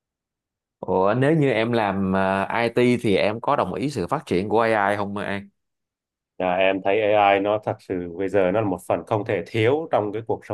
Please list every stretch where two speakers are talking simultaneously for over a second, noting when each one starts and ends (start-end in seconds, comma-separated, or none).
none